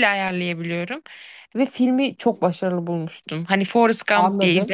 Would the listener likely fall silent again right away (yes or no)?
no